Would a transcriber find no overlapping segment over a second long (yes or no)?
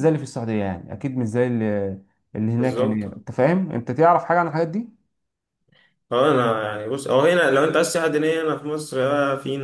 yes